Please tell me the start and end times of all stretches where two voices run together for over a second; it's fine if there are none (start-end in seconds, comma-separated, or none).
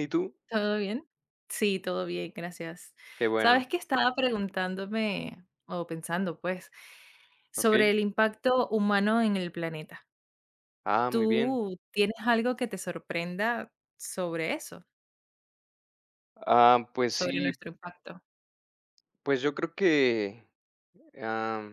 none